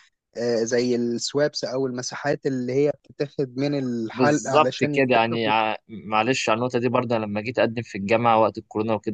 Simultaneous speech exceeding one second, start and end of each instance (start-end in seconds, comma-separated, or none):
4.1-5.5